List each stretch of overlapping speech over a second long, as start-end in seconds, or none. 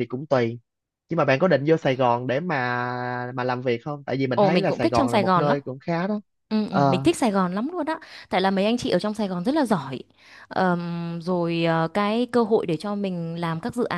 4.3-5.6